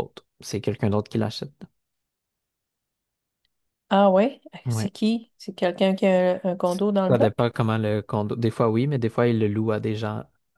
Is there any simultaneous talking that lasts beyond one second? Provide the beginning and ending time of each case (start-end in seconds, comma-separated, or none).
none